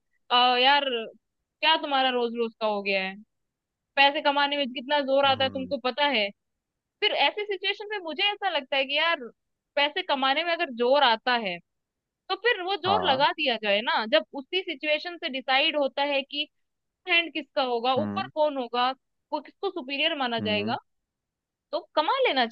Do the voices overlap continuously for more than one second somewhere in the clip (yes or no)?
no